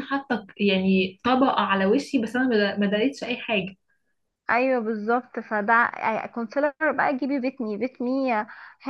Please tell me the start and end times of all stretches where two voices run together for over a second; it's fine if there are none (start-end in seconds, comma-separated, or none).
none